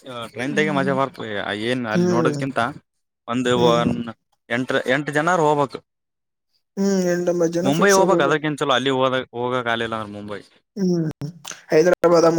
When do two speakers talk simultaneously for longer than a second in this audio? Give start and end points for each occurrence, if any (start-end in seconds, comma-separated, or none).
none